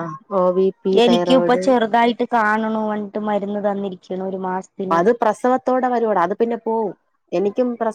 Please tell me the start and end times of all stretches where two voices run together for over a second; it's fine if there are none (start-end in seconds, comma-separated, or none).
none